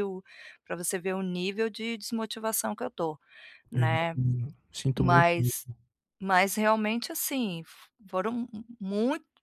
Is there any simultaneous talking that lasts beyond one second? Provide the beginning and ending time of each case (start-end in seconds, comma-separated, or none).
none